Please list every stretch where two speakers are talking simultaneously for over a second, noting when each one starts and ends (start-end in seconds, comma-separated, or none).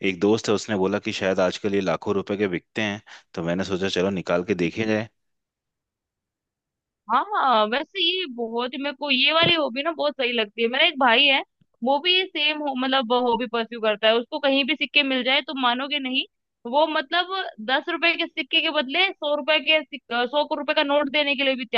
none